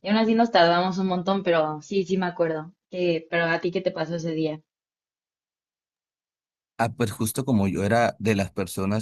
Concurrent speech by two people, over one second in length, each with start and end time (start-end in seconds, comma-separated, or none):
none